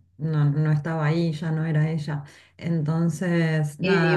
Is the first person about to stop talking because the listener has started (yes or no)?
yes